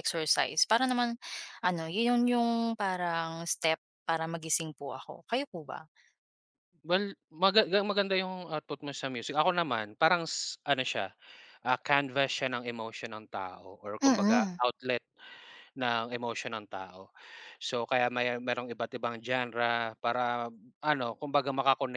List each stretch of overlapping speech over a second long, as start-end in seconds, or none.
none